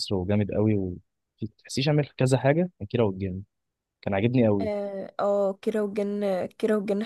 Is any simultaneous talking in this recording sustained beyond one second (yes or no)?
no